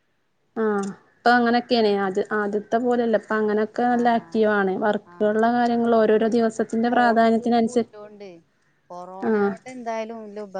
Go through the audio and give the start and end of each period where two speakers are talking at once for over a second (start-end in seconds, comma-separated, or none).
6.1-7.9